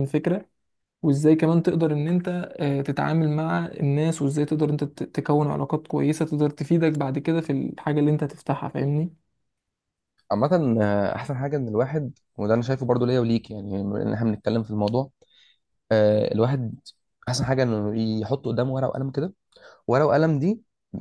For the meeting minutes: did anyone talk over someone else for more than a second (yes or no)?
no